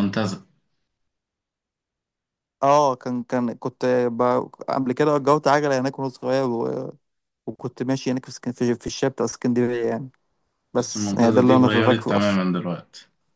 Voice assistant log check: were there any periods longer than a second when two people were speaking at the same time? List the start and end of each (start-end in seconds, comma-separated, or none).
10.8-12.4